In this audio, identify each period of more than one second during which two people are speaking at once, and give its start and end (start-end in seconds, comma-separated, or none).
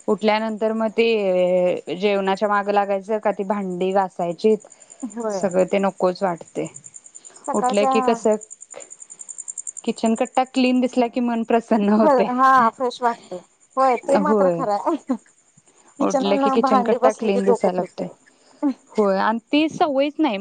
16.6-18.1